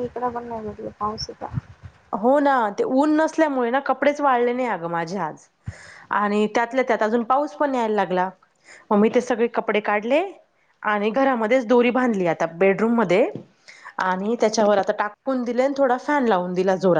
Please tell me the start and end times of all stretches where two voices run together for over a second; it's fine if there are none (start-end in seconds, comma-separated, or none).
none